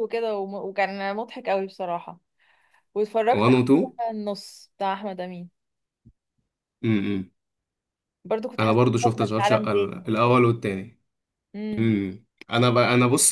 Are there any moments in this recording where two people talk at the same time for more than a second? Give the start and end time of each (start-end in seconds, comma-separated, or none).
8.6-10.0